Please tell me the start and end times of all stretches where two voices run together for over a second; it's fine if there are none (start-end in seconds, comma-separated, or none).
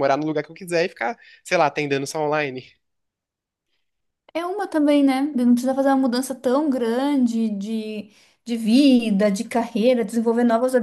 none